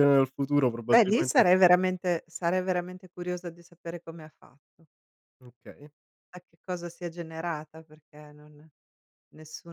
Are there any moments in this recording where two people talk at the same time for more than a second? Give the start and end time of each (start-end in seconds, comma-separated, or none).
none